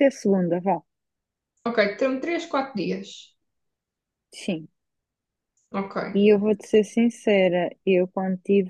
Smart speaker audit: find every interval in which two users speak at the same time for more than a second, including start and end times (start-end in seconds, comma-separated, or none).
none